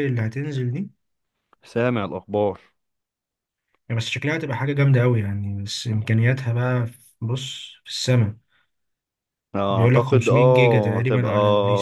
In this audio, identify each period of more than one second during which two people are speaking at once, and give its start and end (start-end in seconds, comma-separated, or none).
9.7-11.3